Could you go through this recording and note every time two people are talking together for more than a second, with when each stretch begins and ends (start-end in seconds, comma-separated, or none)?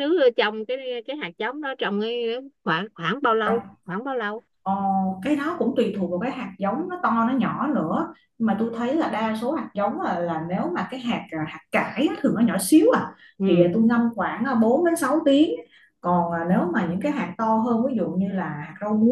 none